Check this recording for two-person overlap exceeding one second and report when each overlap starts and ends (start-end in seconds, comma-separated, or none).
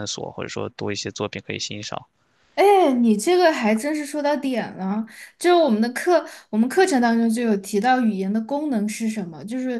none